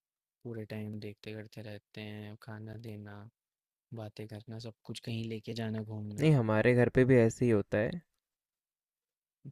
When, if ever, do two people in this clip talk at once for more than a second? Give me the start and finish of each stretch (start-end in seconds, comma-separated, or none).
none